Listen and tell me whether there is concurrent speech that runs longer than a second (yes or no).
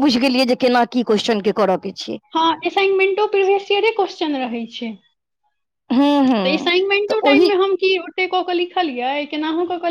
no